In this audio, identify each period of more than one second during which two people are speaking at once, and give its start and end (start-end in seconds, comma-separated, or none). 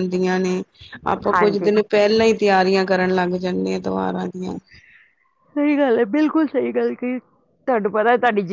none